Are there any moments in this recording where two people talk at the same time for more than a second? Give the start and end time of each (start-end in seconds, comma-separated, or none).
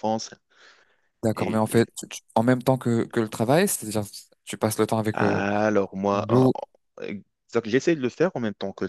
none